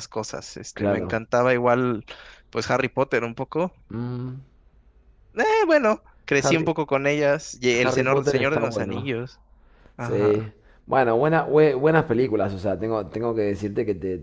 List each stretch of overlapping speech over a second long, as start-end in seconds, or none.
7.7-9.1